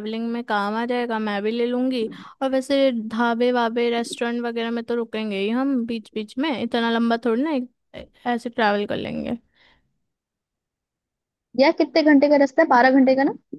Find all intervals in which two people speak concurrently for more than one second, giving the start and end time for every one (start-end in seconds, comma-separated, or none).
none